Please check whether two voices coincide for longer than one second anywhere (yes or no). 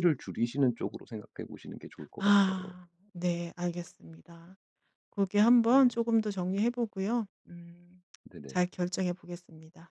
no